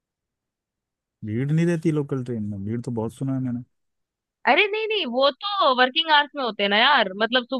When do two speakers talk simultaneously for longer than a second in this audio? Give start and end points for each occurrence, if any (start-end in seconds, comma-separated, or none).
none